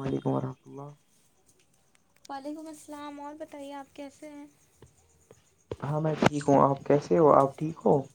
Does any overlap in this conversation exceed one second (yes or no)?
no